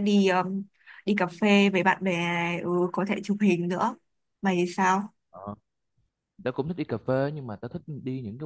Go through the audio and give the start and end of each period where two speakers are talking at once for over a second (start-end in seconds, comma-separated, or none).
none